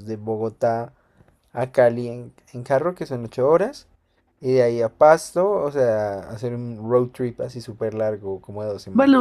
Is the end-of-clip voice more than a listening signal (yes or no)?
yes